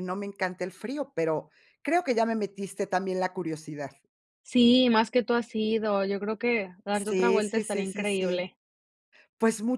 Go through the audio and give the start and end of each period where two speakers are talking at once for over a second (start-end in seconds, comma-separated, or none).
6.9-8.5